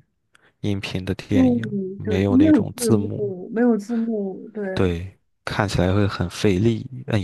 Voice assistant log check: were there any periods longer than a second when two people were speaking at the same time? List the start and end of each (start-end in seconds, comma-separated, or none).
1.3-3.3